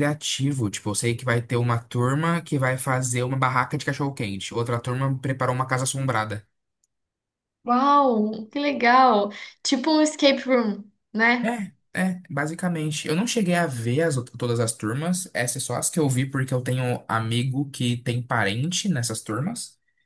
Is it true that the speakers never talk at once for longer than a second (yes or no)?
yes